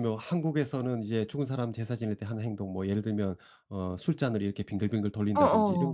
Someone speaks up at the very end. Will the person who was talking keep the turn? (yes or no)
yes